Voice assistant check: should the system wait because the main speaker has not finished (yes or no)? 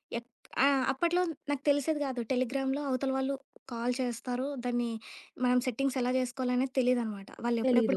yes